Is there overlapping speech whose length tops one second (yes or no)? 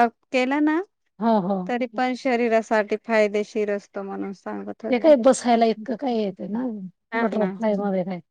no